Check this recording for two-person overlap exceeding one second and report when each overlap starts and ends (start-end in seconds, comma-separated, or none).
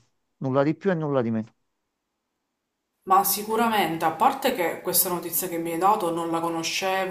none